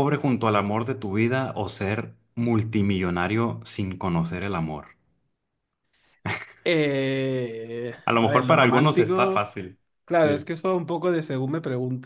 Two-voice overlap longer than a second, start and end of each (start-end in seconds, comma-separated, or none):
8.1-9.5